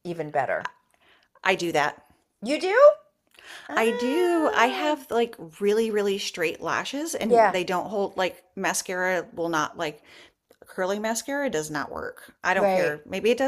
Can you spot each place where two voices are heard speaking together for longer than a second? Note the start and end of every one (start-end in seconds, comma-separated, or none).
3.7-5.0